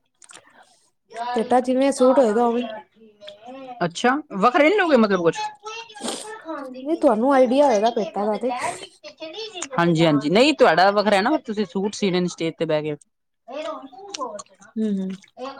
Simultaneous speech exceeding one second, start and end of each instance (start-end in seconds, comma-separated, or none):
1.3-2.6